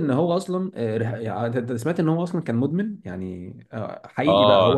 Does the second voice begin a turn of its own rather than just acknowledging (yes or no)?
yes